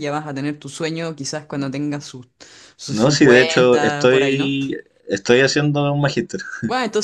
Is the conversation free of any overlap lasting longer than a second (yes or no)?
no